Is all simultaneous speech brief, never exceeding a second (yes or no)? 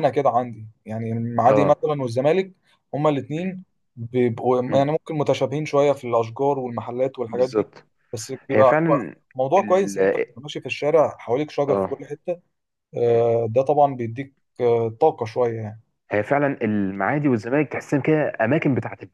yes